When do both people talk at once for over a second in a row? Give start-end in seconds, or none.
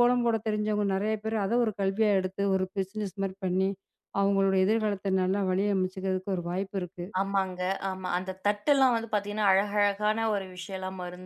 none